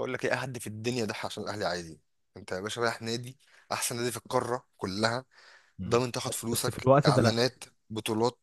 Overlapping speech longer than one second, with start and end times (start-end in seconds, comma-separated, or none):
5.9-7.3